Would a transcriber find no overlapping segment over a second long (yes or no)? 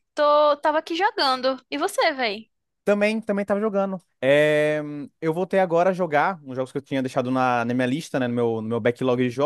yes